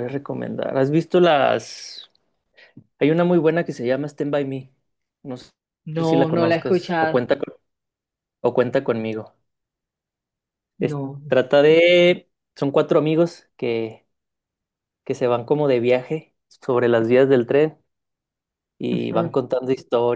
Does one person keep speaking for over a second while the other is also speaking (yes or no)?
yes